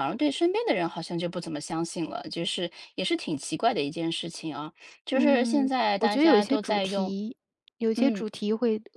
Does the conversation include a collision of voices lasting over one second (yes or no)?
yes